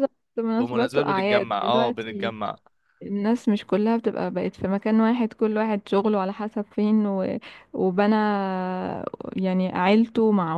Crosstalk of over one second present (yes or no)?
yes